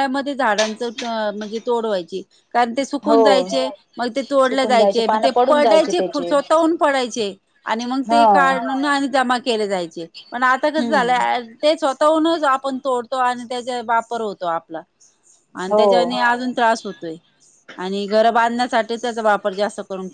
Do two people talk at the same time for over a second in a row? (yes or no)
yes